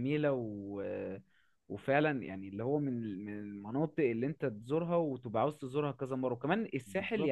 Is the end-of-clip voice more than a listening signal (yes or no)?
no